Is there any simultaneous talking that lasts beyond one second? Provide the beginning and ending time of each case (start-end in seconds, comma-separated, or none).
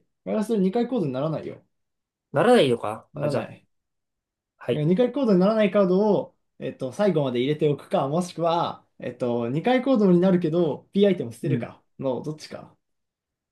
none